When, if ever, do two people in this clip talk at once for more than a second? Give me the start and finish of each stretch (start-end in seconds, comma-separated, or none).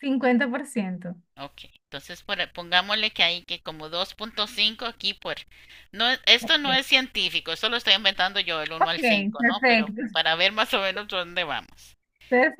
8.8-10.0